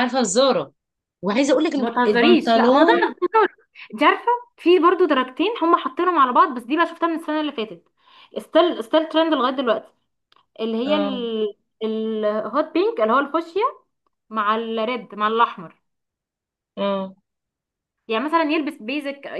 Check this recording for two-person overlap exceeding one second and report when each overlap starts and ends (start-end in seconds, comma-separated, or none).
1.7-3.1